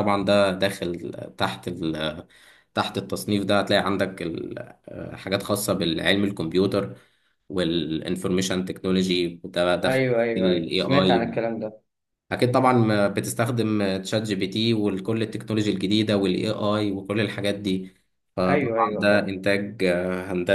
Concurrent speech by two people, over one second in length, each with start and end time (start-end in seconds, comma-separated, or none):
9.8-11.3